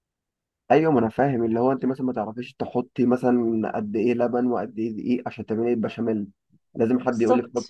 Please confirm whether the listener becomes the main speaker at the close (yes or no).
no